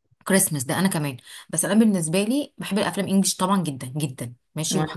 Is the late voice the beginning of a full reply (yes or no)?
no